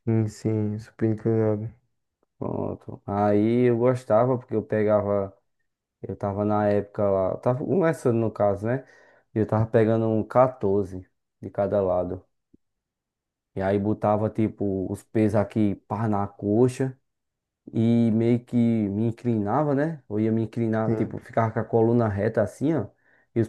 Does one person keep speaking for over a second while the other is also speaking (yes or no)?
no